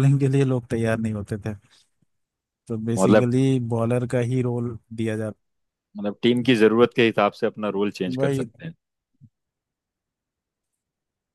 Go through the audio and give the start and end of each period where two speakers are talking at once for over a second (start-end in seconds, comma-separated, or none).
none